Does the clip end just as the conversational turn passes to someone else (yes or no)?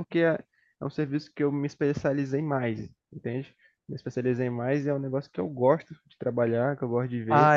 yes